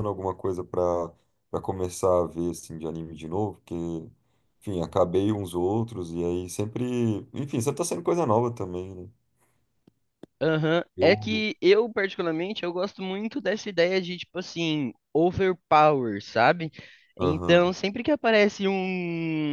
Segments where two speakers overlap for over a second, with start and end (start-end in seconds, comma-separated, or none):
none